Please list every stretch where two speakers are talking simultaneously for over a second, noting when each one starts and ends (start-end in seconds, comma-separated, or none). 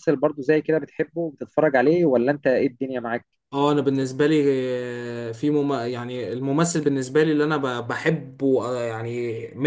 none